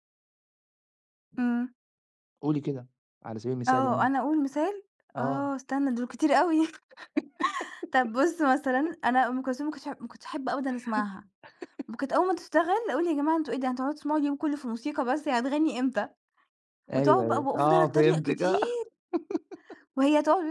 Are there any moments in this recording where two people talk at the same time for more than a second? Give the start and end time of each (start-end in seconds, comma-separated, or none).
17.0-18.6